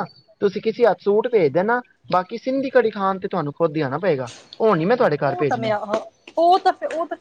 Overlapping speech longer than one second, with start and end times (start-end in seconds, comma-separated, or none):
none